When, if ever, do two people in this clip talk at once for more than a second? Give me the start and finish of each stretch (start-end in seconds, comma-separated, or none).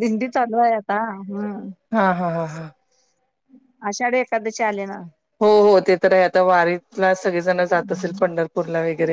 none